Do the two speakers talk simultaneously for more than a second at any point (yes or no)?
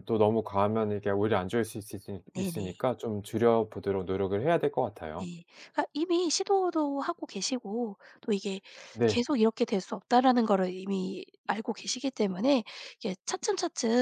no